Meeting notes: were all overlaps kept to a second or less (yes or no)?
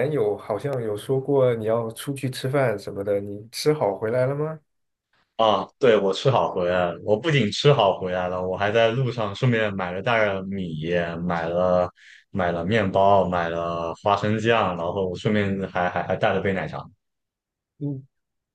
yes